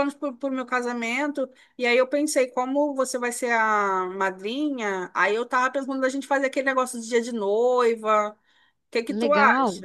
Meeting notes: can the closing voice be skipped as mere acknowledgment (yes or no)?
no